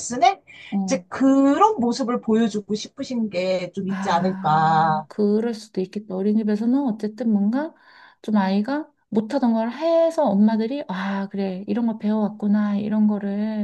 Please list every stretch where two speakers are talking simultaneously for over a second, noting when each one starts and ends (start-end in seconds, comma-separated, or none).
3.9-5.1